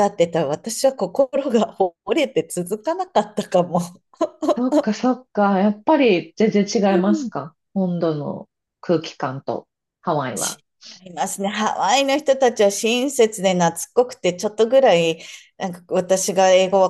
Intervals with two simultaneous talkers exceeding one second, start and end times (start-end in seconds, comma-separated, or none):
none